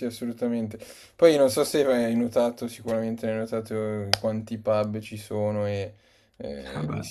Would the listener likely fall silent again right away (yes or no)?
yes